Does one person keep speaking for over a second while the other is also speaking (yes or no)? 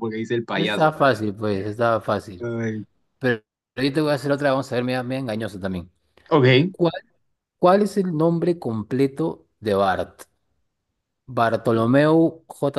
no